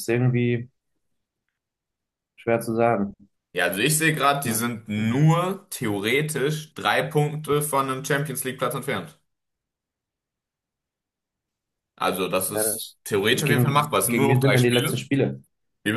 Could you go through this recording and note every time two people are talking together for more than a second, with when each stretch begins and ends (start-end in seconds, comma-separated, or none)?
12.5-15.1